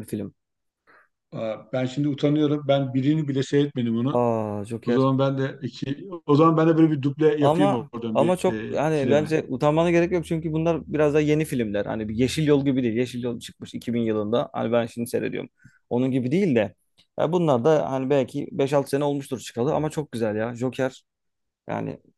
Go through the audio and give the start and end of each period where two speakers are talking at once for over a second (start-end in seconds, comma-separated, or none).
7.4-9.3